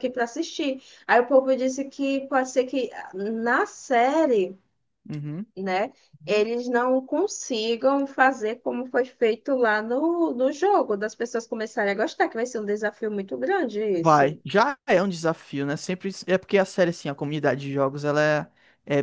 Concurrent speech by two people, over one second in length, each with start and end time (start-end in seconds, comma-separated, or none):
none